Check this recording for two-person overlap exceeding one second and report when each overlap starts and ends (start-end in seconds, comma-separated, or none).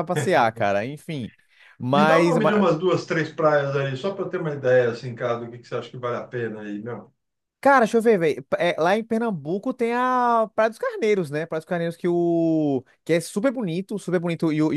none